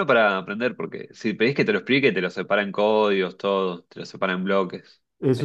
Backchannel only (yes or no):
no